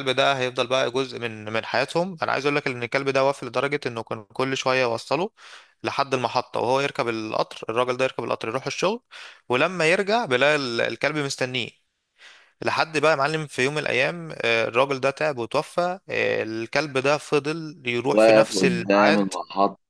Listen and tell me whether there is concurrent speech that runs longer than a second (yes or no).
yes